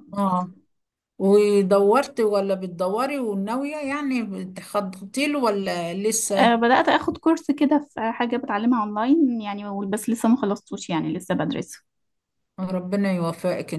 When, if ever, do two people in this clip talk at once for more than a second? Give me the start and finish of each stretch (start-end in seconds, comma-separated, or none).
none